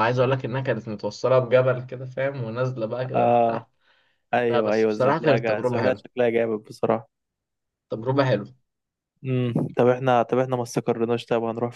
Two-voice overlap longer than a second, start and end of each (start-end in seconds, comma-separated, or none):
4.5-6.0